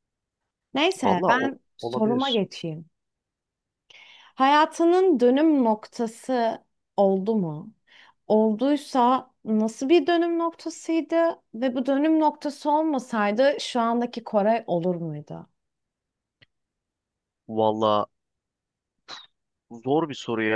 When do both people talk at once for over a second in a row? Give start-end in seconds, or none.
1.0-2.4